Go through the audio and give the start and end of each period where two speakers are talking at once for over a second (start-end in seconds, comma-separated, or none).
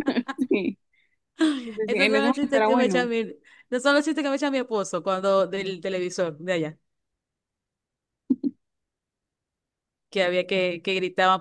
1.9-3.1